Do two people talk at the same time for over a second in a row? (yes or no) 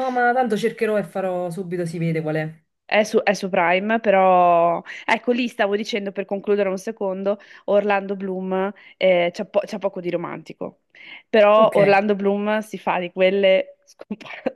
no